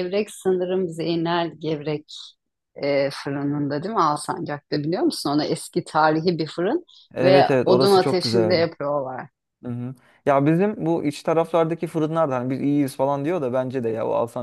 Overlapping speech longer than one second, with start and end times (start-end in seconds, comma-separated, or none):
7.2-8.6